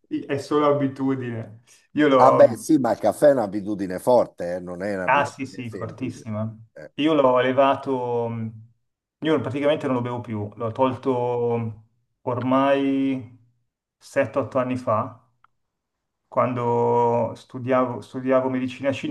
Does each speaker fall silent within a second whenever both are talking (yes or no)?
no